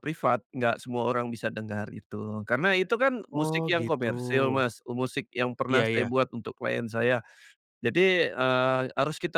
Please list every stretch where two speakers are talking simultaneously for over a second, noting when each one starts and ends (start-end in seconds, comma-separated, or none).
3.3-4.6